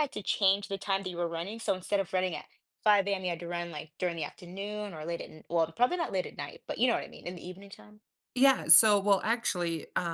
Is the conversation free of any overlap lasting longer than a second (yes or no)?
yes